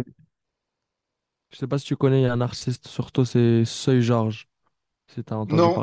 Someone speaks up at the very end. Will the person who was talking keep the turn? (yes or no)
no